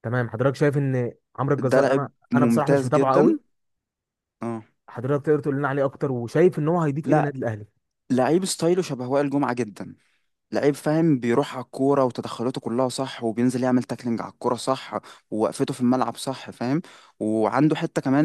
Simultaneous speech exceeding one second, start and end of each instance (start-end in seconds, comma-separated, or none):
1.6-3.4